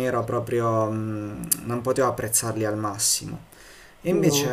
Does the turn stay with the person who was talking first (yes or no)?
yes